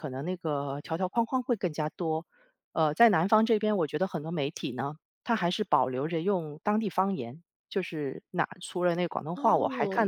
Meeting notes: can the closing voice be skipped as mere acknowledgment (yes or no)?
yes